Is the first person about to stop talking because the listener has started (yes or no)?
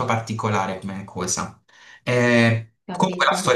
no